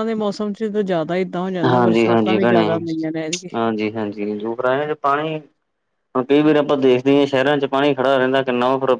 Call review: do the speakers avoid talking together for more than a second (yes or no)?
yes